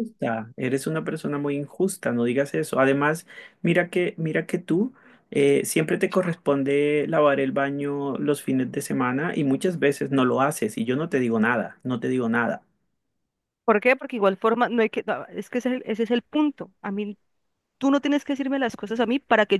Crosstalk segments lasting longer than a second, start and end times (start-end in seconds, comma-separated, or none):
none